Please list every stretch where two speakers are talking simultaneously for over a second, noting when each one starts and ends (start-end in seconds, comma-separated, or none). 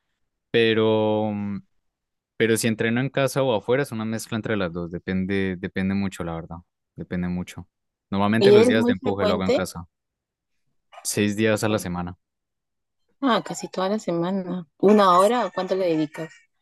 8.4-9.7